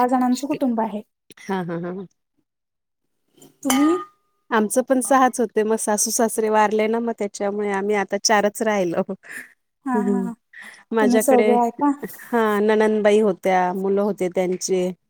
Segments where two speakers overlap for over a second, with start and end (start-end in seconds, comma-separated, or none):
none